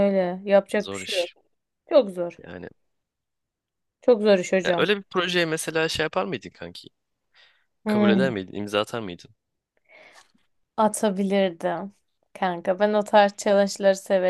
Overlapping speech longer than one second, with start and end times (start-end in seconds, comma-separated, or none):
none